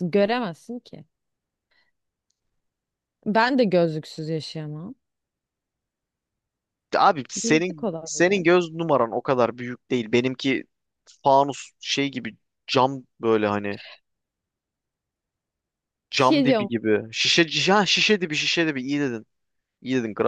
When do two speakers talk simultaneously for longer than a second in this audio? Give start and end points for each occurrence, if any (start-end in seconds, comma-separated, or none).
7.4-8.6